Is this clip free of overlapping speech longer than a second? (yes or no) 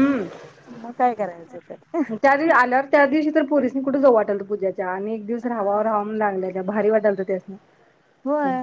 yes